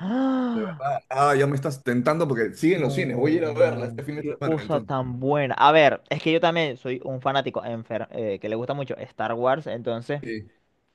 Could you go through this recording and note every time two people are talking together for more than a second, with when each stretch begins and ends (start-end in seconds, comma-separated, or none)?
2.7-5.0